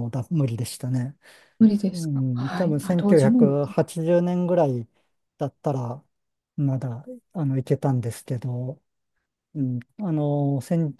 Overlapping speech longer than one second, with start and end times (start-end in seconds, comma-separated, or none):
1.9-3.7